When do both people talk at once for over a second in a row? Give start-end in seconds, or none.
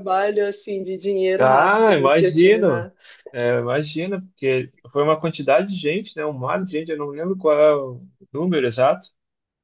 1.4-2.6